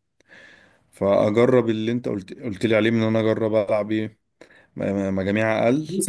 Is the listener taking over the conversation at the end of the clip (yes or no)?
yes